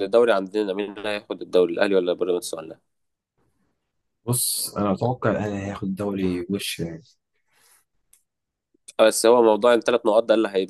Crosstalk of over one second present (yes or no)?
no